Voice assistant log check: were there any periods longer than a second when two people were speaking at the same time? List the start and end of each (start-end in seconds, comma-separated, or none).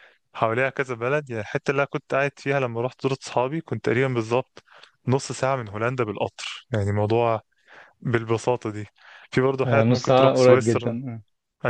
9.7-11.0